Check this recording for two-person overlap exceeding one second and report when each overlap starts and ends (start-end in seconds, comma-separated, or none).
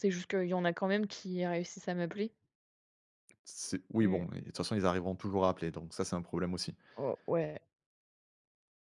none